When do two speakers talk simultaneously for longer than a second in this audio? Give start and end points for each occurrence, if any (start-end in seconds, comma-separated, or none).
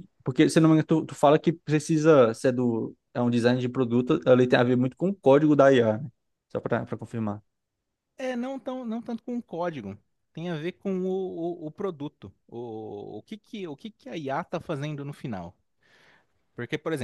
none